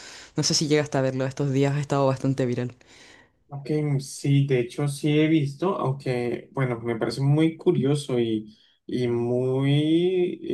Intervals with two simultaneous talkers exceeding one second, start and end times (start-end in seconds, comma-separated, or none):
none